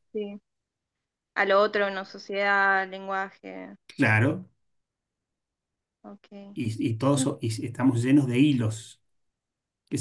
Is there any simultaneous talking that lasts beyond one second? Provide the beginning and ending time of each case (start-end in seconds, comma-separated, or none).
none